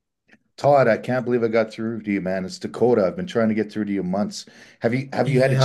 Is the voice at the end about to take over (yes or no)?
yes